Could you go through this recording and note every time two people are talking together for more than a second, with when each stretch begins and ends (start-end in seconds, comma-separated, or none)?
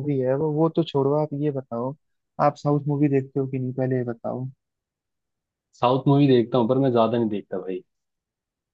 none